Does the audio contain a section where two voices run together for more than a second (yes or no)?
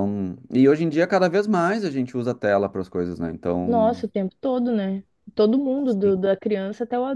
no